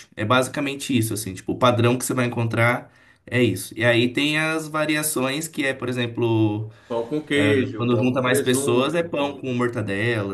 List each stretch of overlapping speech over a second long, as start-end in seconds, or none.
7.8-9.4